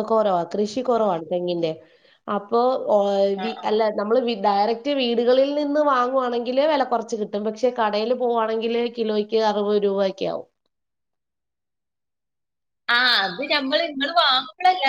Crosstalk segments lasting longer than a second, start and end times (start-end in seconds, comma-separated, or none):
none